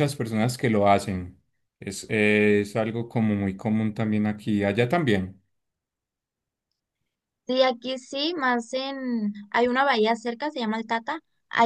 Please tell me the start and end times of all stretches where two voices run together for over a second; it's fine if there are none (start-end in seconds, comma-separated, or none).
none